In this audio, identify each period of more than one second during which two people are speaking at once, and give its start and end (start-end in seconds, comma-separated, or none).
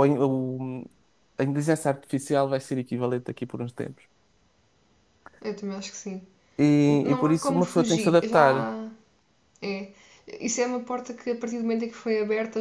7.0-8.7